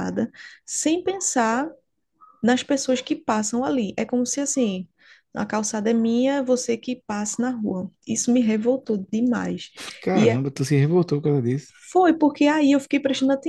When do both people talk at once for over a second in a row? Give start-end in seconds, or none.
none